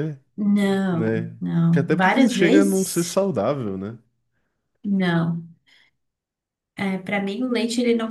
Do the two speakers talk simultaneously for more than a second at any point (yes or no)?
yes